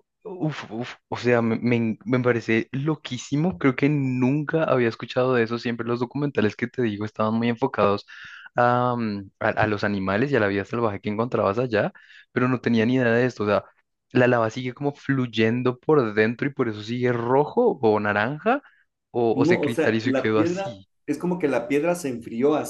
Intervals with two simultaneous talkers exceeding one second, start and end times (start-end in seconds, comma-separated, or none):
19.3-20.9